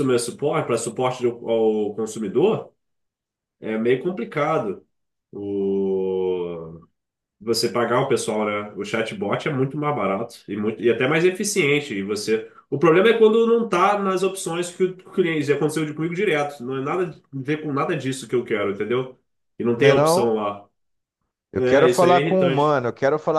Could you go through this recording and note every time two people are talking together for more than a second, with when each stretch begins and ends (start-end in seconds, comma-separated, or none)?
21.5-22.8